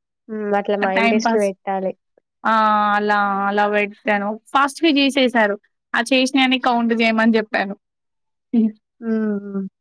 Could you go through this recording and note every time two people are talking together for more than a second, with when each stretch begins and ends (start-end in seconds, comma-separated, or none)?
none